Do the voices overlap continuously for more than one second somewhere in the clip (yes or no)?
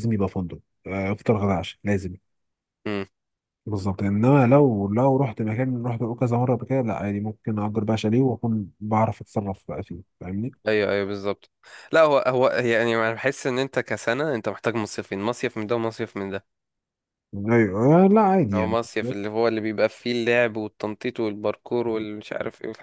no